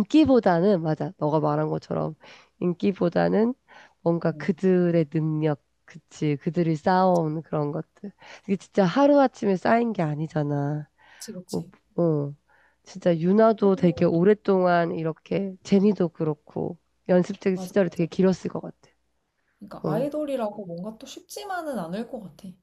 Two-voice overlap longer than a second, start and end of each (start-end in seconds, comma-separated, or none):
none